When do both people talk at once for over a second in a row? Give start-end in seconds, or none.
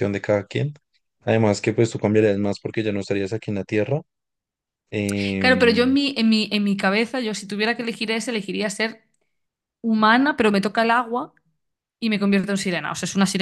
none